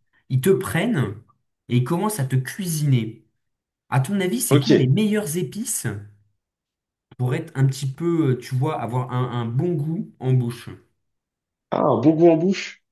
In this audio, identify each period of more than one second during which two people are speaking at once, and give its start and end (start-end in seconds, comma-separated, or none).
none